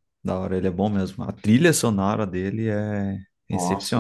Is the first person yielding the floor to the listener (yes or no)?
yes